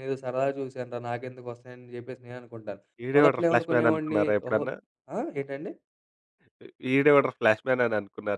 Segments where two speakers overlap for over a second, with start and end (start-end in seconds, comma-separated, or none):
3.2-4.7